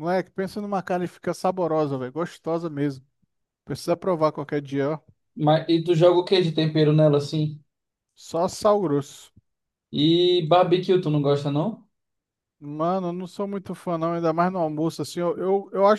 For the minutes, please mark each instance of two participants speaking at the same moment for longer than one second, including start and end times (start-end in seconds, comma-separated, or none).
none